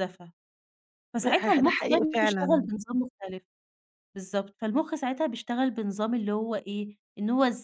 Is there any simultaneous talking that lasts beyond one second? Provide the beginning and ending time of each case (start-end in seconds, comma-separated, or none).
1.1-2.7